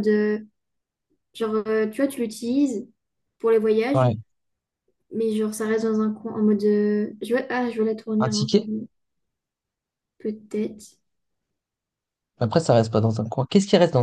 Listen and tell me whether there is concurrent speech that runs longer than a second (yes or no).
no